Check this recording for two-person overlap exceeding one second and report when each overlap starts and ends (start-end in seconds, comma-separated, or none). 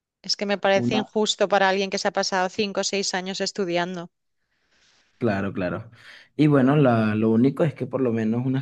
none